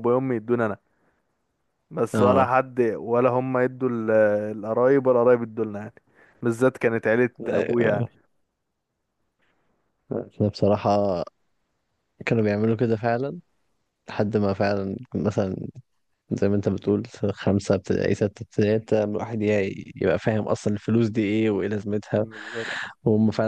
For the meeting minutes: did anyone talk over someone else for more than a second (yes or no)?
no